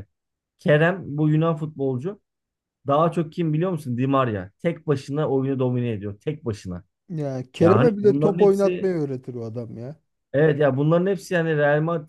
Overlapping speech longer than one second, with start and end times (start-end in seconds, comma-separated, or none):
7.6-8.9